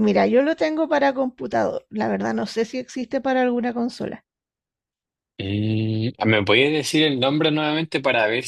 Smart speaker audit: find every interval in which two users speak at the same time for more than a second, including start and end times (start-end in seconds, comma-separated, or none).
none